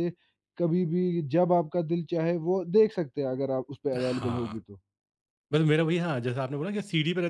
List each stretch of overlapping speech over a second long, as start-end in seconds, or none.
none